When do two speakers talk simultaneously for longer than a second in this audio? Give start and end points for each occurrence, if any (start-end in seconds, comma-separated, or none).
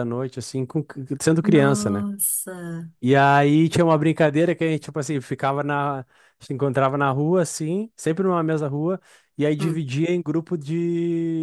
none